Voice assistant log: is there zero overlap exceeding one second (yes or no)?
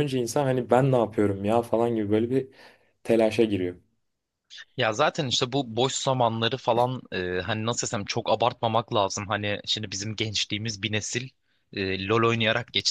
yes